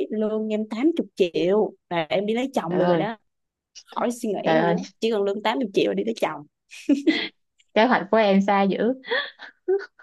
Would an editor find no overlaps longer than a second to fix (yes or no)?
yes